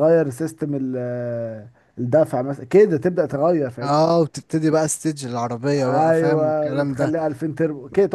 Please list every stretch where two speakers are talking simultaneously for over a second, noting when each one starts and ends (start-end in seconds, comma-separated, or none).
5.9-7.2